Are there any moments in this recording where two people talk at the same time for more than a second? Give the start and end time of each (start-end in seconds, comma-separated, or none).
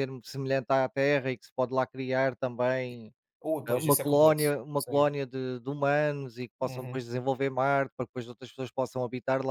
3.7-5.0